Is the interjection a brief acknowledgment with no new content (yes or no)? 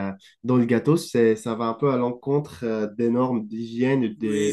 no